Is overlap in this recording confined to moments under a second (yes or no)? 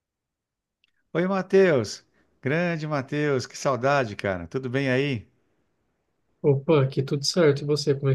yes